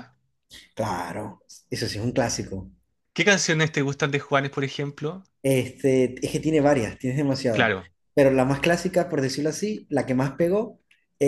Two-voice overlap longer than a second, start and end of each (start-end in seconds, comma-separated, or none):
none